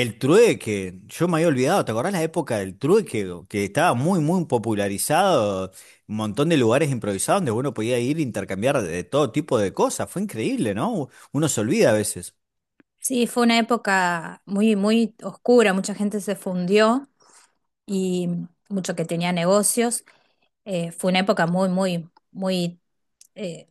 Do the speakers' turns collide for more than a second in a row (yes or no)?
no